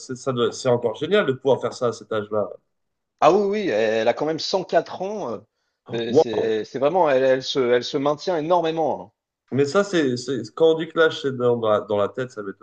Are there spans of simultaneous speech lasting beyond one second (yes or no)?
no